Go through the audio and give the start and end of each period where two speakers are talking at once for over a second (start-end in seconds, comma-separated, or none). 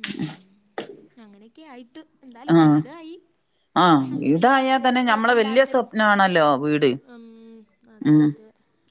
4.0-5.8